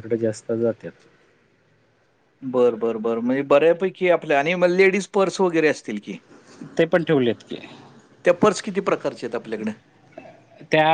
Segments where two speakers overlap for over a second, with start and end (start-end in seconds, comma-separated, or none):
none